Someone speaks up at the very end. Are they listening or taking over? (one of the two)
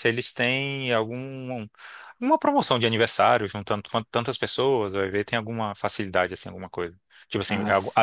listening